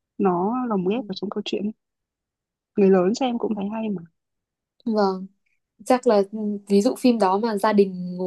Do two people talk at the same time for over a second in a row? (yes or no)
no